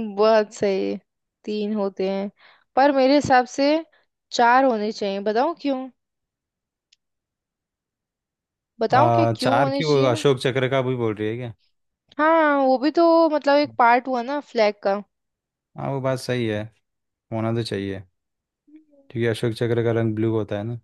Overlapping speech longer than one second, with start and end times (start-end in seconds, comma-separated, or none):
8.9-10.2